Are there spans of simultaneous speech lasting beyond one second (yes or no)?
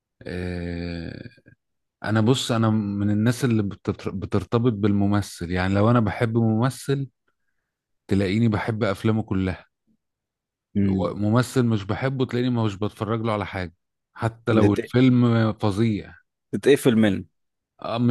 no